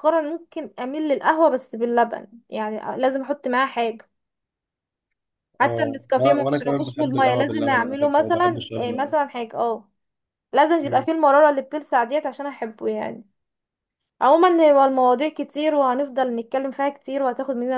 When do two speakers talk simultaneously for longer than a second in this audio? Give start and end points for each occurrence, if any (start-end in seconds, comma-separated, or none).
5.6-9.1